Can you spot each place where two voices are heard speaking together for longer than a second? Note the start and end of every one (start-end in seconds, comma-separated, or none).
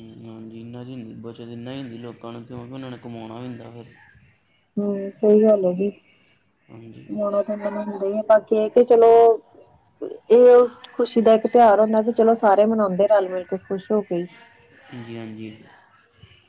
none